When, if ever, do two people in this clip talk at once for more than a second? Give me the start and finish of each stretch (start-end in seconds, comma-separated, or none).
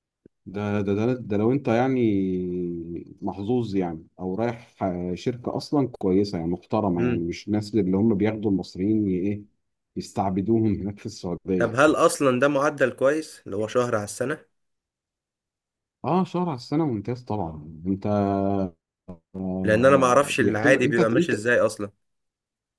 19.6-21.3